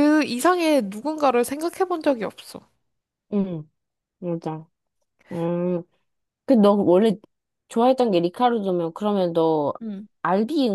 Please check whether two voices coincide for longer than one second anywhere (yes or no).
no